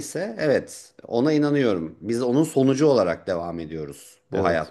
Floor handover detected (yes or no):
no